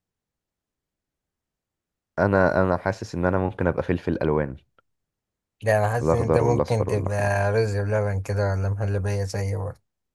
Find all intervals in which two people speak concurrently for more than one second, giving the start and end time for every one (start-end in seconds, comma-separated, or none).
6.0-7.3